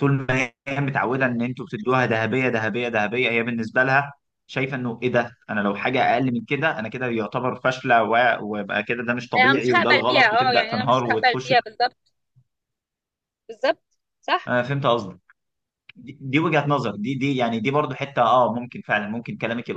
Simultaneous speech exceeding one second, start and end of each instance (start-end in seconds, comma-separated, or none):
9.3-11.5